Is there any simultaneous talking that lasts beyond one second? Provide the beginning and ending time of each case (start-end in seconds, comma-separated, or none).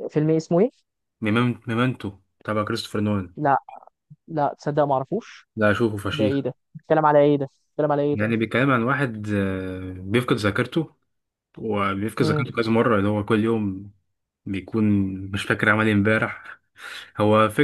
none